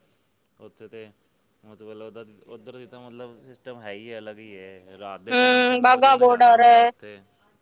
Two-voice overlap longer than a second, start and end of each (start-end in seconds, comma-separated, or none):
5.3-6.9